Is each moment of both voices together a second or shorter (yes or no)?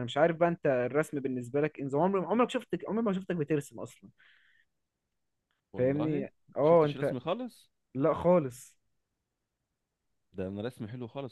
no